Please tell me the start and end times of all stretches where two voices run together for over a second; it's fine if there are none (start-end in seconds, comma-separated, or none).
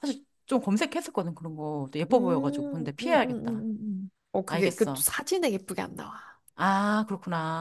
2.1-3.4